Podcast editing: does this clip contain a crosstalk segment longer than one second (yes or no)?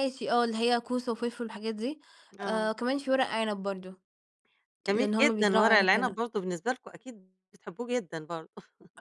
yes